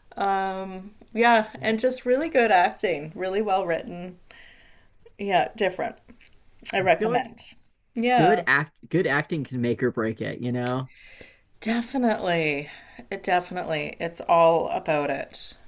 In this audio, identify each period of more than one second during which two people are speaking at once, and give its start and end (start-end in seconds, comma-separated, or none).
none